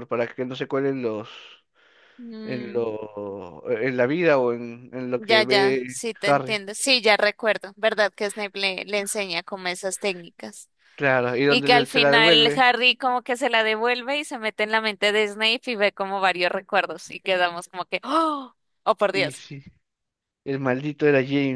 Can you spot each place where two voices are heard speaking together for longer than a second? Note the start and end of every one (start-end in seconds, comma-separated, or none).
5.2-6.6, 11.5-12.7